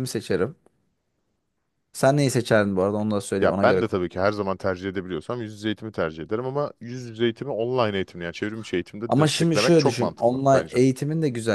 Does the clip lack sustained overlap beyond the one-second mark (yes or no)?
no